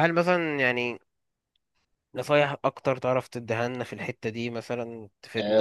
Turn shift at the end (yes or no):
yes